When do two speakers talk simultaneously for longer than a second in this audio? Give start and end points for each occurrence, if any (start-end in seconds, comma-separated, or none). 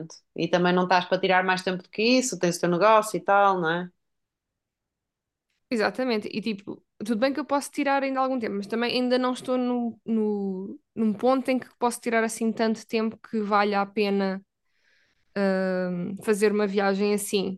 none